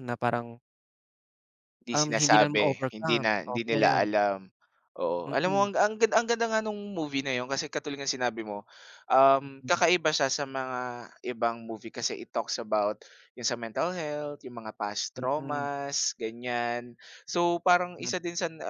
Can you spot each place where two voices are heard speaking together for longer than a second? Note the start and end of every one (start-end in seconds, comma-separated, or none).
1.9-4.1